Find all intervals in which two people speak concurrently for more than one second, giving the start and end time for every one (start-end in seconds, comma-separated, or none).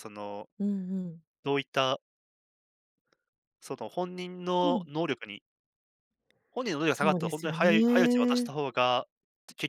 6.9-8.5